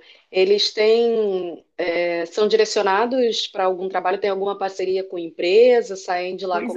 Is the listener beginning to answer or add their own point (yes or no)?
yes